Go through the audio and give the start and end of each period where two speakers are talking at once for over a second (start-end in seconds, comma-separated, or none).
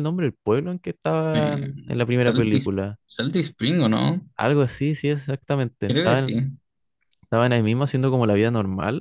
1.3-2.6